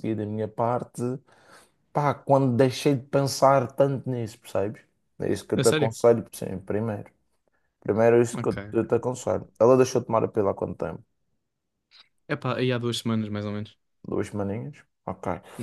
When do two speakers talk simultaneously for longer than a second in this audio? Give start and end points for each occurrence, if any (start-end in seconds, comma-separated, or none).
none